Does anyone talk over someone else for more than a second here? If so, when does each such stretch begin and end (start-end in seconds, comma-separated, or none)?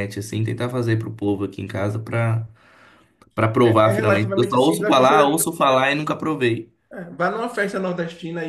3.6-5.4